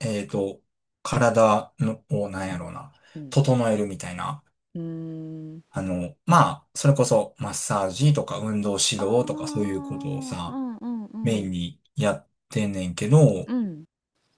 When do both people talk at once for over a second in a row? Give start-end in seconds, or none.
9.0-10.6